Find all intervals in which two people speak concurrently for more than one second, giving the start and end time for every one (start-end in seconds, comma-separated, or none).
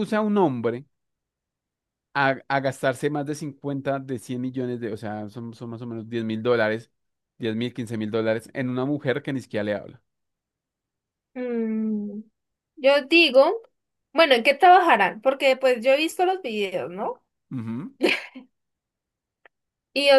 none